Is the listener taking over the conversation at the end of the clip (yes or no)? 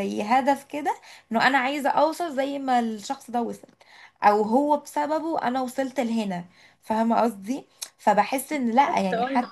no